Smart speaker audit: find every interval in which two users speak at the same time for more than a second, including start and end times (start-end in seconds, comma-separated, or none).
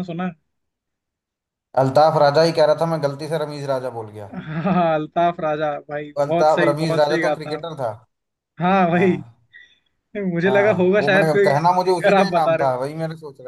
6.2-7.6, 10.5-12.7